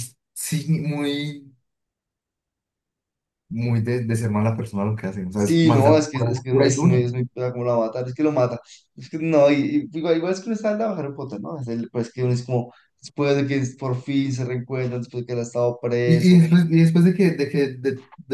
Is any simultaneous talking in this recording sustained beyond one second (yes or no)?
yes